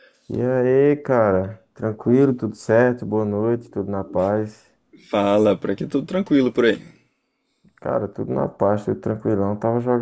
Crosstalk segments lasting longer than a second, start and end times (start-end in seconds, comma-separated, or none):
none